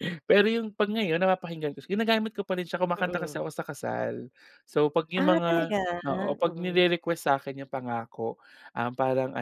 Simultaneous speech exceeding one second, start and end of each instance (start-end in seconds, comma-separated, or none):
none